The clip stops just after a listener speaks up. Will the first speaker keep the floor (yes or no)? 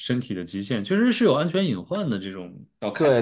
no